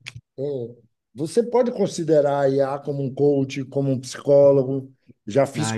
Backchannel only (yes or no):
no